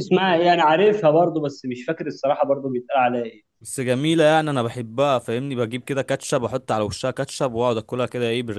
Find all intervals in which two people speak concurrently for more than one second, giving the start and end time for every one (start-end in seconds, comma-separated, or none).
none